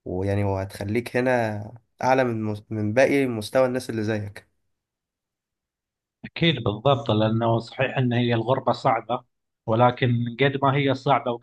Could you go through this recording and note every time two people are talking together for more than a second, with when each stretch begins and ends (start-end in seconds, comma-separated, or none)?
none